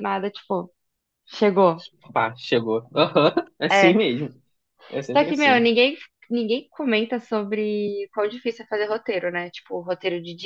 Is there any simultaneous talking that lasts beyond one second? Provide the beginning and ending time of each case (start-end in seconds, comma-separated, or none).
none